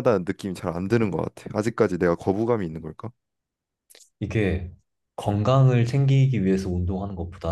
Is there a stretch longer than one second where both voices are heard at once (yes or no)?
no